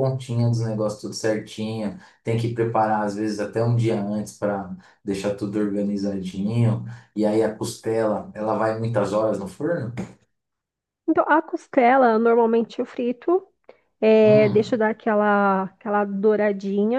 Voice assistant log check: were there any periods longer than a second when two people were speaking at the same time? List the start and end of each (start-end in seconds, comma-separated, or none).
none